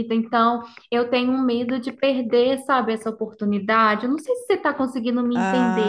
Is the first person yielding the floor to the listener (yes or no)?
yes